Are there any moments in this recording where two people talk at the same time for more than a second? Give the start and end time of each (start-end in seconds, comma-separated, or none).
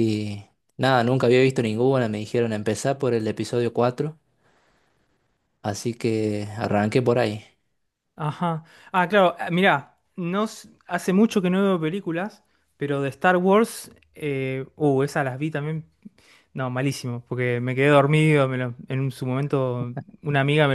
none